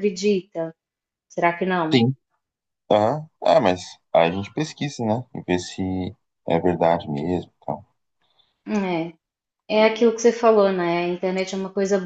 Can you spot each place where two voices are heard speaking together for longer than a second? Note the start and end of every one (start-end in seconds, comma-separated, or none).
none